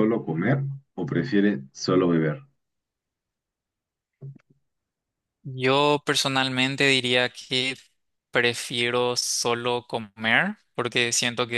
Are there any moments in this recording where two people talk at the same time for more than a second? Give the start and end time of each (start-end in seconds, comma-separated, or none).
none